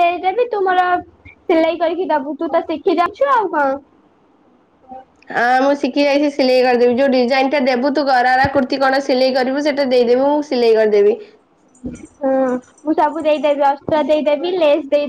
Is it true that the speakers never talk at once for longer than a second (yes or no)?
yes